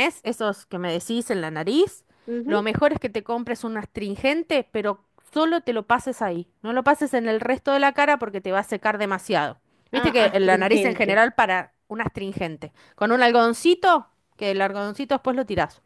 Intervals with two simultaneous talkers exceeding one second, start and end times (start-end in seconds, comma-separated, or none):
9.9-11.2